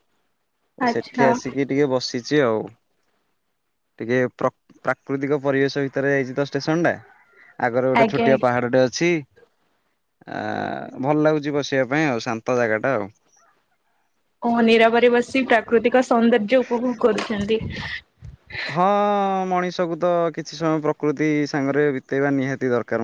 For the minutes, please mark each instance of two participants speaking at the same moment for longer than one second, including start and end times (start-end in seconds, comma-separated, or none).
none